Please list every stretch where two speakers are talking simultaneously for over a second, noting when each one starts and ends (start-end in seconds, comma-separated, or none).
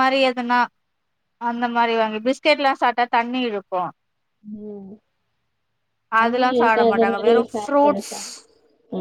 6.2-8.3